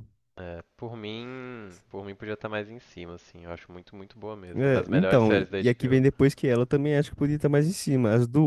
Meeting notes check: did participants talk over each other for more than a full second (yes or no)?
yes